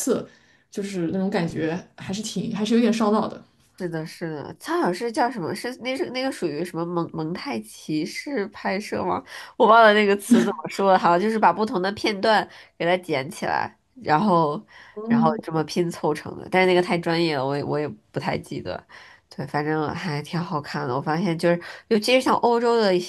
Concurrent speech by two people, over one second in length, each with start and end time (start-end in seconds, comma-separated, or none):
none